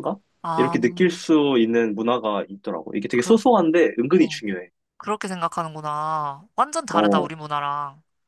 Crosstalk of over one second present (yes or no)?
no